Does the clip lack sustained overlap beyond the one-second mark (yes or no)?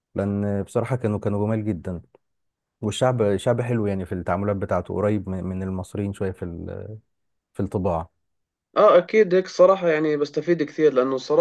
yes